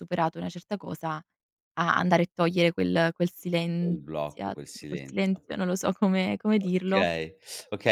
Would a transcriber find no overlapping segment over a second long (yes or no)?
no